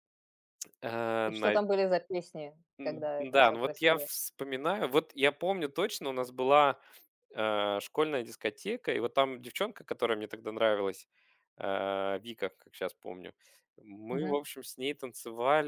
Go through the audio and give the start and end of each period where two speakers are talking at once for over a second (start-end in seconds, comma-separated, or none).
2.8-4.1